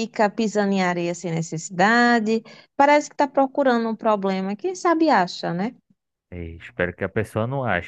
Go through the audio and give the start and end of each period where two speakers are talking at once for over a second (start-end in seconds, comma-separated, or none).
none